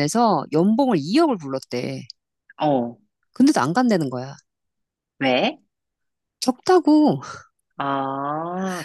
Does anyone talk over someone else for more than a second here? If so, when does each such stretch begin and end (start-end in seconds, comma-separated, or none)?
none